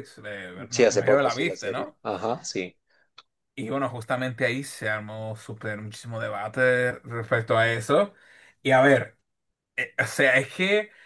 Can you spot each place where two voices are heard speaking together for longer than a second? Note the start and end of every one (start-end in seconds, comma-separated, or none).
0.7-2.0